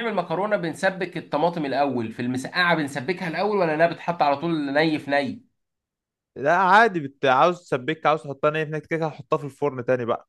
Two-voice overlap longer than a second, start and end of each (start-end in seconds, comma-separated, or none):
none